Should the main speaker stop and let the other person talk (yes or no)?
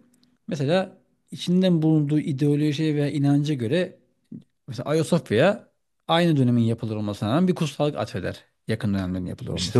yes